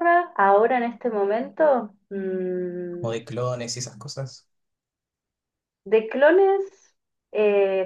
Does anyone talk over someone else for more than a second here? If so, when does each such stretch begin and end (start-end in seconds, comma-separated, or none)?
none